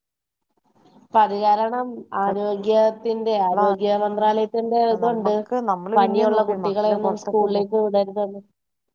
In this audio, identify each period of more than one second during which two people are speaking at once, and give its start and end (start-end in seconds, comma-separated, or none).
6.0-7.6